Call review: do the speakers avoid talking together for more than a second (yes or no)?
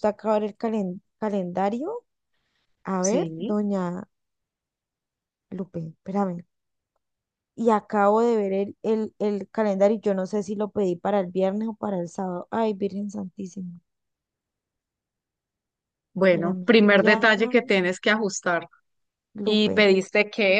no